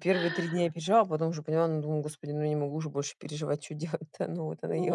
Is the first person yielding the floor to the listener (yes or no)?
yes